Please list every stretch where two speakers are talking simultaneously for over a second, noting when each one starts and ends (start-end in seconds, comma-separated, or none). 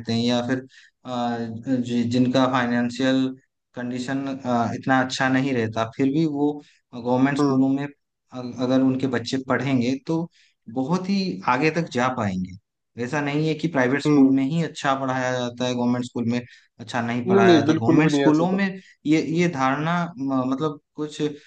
17.3-18.6